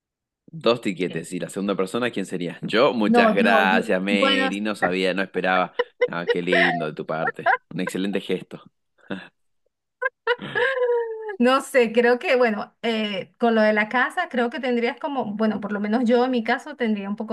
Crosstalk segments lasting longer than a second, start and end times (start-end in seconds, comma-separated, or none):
3.1-4.5